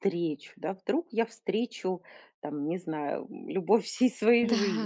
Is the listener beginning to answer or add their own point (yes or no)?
yes